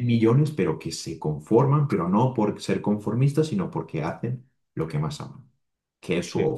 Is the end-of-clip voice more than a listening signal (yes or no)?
yes